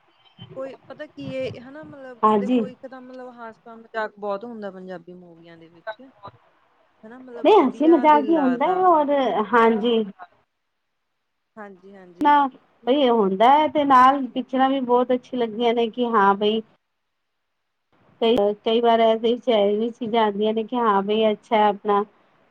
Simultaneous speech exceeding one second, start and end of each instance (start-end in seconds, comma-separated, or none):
7.3-8.8